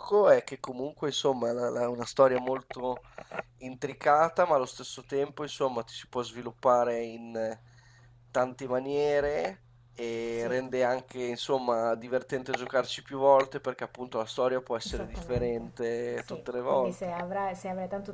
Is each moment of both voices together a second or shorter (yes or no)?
no